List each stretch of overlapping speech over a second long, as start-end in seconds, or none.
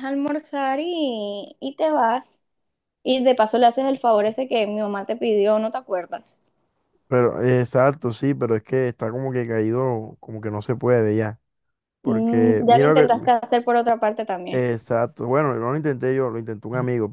12.0-13.3